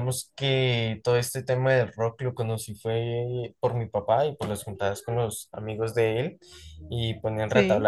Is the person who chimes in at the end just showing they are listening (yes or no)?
yes